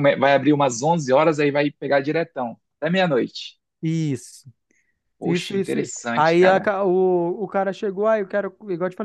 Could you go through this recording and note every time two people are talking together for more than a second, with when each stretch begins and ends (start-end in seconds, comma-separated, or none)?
5.2-6.7